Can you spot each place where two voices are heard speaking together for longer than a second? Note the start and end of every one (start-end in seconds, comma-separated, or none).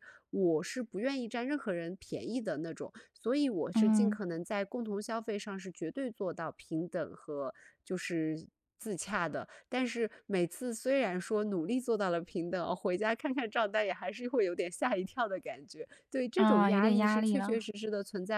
16.4-17.6